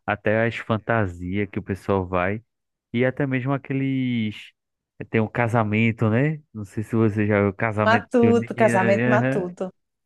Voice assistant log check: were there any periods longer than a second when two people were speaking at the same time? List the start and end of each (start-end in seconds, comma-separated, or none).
7.8-9.6